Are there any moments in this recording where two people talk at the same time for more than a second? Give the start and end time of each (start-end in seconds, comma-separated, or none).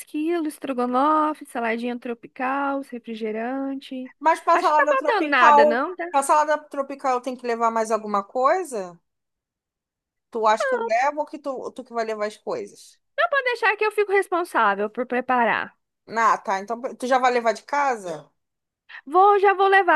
4.5-6.1